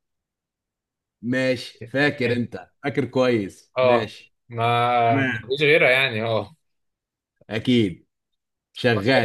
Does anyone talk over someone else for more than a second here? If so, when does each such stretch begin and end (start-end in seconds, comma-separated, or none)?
none